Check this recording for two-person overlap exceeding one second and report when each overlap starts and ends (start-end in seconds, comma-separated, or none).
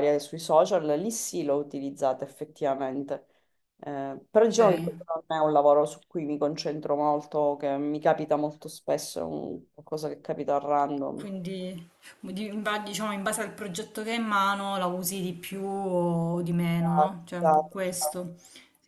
16.8-18.2